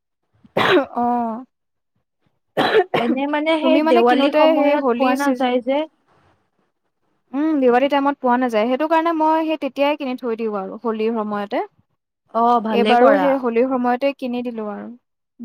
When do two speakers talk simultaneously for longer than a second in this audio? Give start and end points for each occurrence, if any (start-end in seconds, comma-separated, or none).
3.6-5.5